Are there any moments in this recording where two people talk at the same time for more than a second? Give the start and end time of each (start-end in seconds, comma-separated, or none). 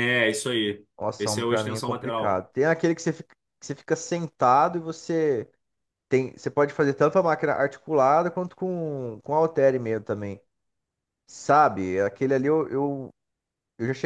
1.0-2.5